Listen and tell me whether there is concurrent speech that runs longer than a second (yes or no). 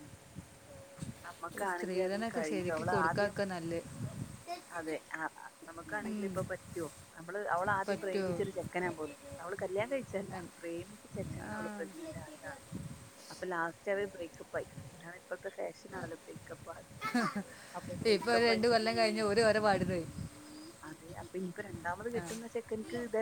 yes